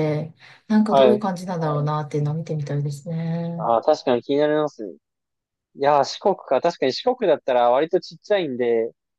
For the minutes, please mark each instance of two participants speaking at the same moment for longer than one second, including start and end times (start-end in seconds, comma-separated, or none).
none